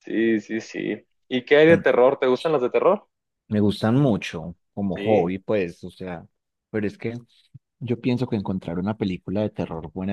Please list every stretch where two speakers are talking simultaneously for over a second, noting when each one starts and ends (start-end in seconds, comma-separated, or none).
none